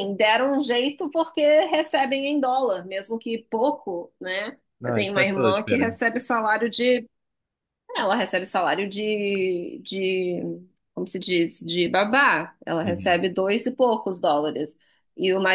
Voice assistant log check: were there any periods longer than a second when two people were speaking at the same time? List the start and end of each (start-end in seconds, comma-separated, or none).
4.8-6.0